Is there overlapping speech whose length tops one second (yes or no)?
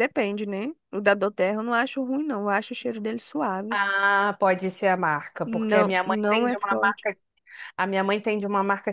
yes